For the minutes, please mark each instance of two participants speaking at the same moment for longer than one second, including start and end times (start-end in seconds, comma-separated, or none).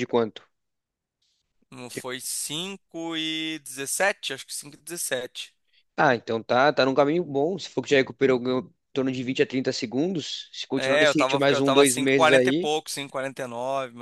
10.8-12.7